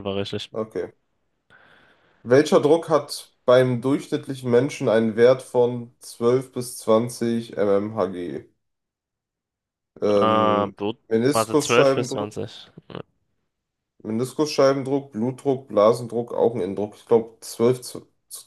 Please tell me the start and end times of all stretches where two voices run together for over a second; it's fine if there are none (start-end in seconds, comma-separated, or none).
10.1-12.3